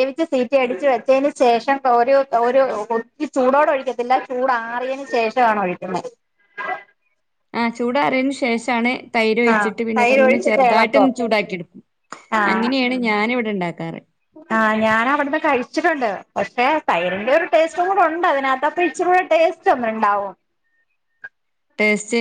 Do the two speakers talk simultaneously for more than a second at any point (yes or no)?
yes